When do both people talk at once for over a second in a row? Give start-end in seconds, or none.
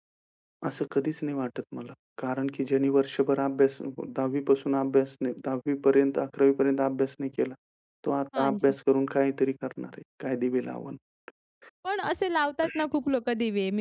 none